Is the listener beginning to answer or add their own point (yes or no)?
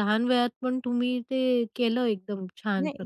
yes